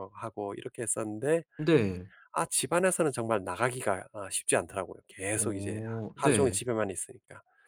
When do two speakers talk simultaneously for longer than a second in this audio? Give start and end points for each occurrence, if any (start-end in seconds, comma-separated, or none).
5.3-6.6